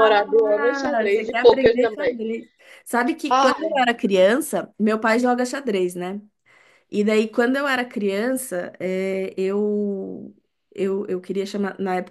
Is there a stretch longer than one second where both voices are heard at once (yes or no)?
yes